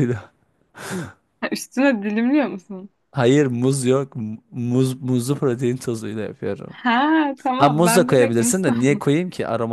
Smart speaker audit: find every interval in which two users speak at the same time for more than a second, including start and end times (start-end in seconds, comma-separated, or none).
7.6-9.1